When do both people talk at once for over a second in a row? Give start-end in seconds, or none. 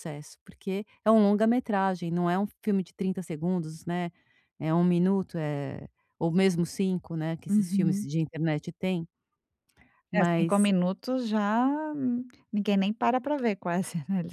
none